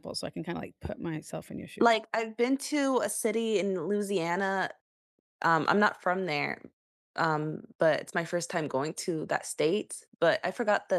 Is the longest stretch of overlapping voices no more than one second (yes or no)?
yes